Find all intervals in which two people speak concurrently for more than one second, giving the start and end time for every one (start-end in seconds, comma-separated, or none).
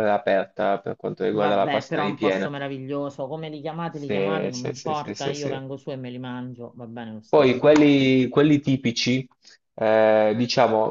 1.3-2.5, 3.9-5.6